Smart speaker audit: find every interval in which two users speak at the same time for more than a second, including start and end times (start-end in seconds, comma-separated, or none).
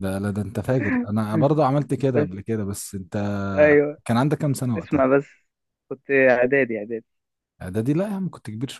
none